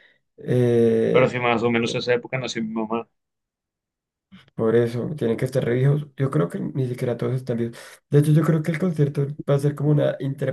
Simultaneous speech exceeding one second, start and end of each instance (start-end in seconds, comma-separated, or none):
none